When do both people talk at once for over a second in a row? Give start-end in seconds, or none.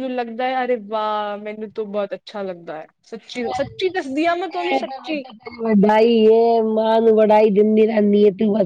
none